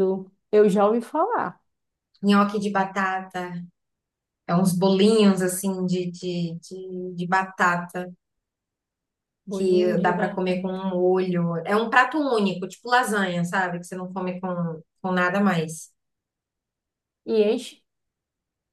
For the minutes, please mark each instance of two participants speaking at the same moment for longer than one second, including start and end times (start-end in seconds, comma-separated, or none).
9.5-10.8